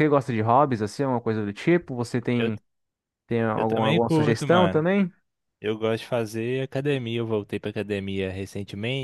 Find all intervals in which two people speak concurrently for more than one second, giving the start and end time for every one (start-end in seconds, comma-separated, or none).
3.6-4.8